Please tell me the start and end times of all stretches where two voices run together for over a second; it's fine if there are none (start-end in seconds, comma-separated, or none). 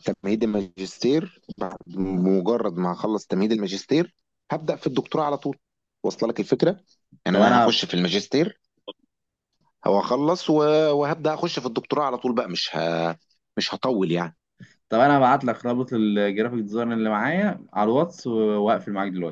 none